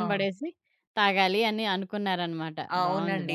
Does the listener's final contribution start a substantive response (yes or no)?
yes